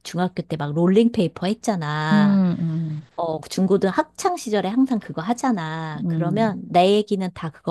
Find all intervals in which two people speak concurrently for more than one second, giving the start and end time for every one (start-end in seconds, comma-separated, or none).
none